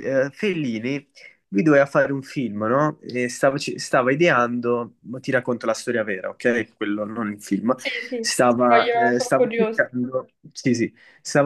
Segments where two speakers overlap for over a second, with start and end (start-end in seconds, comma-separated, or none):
8.2-9.8